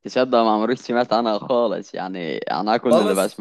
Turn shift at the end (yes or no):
no